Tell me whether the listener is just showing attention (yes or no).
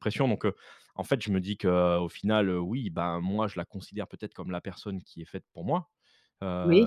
yes